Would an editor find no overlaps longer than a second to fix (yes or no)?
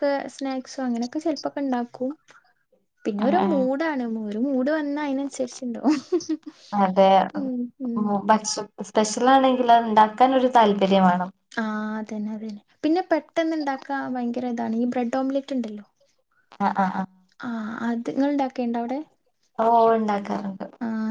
yes